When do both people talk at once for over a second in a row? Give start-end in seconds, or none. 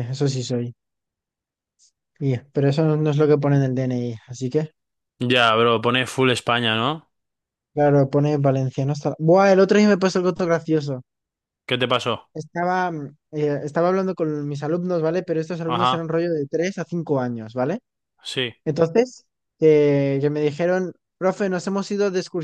none